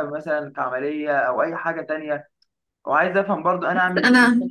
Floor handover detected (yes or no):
no